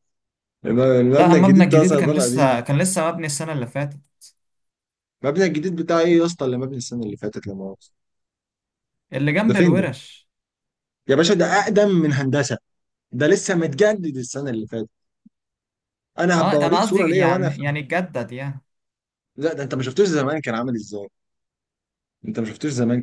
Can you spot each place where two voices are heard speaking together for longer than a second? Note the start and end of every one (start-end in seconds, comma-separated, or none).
1.2-2.6, 16.4-17.6